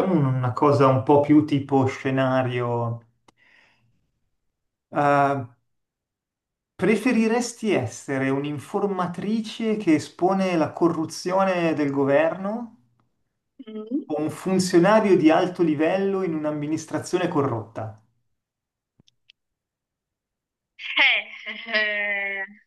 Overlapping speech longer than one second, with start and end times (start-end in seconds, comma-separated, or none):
none